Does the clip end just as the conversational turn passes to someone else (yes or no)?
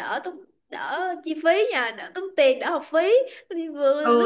yes